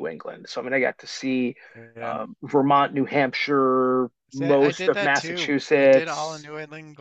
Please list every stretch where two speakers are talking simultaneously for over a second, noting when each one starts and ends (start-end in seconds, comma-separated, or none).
4.3-6.5